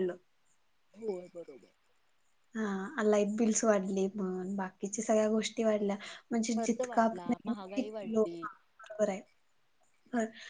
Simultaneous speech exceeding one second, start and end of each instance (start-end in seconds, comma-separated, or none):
6.6-8.5